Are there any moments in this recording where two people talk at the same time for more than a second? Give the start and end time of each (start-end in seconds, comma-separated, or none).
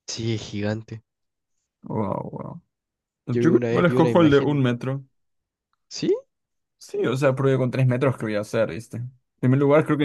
3.3-4.6